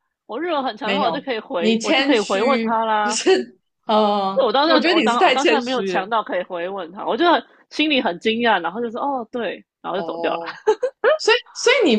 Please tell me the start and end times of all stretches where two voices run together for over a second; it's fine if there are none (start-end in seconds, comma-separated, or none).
0.8-3.2, 4.3-6.1